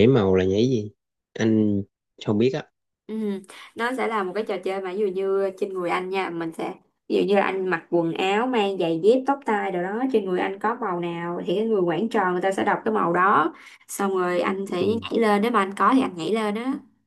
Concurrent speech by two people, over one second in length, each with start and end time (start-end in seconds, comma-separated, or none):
none